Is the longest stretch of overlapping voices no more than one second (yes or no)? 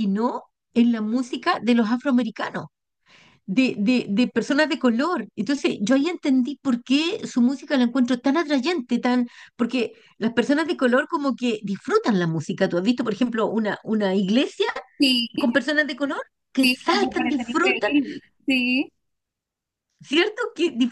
no